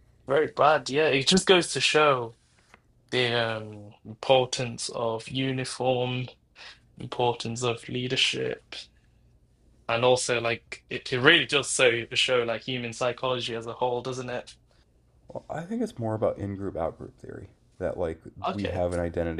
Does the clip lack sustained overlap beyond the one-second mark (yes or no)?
yes